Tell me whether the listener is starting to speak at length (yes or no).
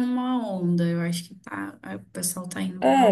yes